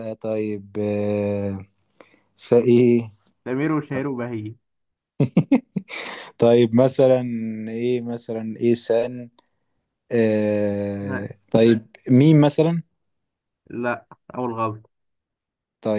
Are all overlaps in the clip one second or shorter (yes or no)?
yes